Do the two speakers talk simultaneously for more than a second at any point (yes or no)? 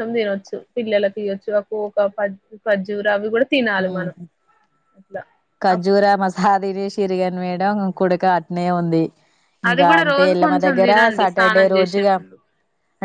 yes